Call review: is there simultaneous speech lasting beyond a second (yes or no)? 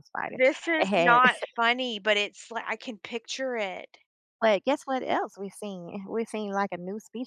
no